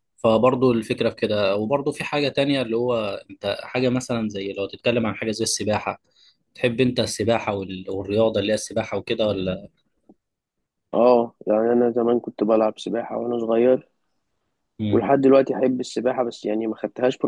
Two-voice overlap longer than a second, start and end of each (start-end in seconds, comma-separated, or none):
none